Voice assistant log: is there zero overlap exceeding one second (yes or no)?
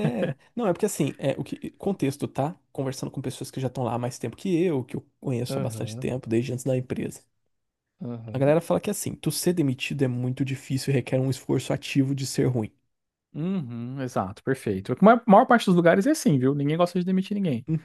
yes